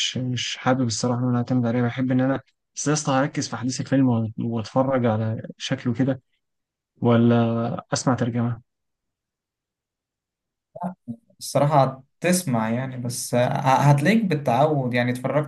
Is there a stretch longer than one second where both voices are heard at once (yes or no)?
no